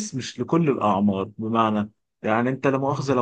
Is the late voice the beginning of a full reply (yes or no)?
no